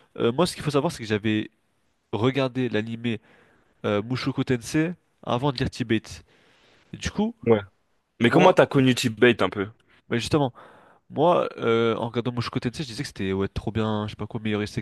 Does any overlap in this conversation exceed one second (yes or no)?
no